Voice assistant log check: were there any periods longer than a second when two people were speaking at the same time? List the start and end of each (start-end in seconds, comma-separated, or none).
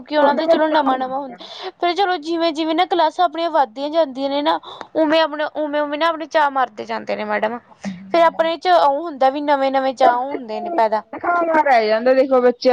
none